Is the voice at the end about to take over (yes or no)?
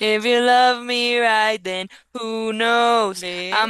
no